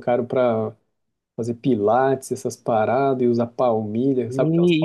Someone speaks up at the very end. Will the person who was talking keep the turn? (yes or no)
no